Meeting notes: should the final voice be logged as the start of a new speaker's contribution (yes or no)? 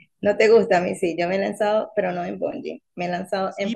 yes